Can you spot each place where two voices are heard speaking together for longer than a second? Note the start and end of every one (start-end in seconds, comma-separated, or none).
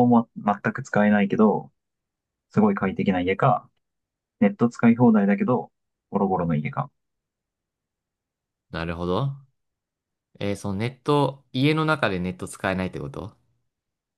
none